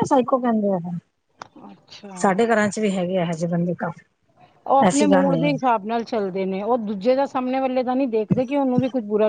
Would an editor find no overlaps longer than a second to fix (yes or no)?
yes